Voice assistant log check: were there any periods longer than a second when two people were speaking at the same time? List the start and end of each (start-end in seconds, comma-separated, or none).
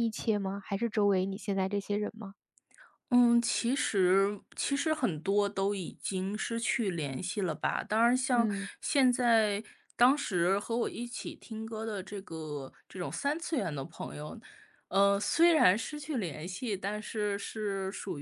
none